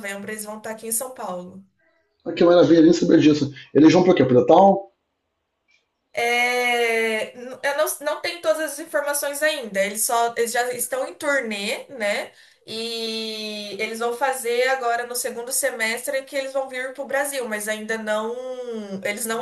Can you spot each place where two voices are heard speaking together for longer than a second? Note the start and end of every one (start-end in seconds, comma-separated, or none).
none